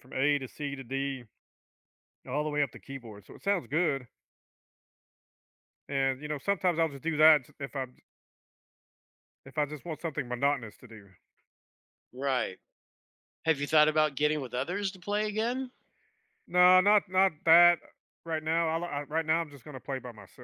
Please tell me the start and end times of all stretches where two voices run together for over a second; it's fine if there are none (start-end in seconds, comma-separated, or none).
none